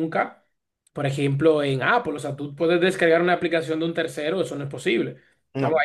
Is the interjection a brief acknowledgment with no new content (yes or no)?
yes